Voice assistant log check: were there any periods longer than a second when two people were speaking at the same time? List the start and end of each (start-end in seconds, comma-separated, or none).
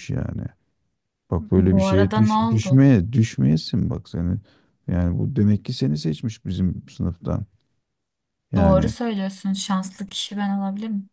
1.6-2.8